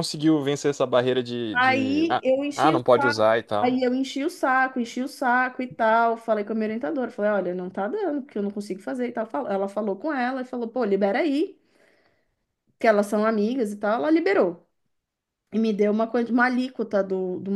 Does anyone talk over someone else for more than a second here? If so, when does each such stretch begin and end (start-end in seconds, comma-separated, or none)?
1.5-3.8